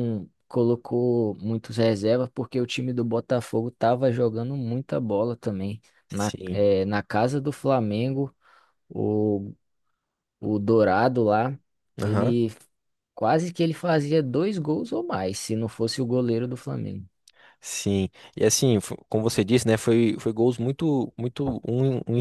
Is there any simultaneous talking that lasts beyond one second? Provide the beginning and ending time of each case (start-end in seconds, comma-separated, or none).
none